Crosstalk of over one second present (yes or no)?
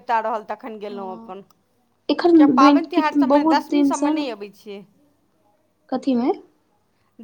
yes